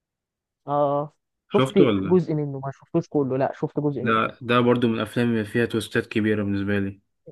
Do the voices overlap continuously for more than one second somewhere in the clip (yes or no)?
no